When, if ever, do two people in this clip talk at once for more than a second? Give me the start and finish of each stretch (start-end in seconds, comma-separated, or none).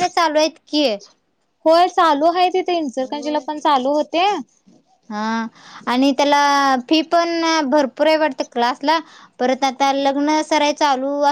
none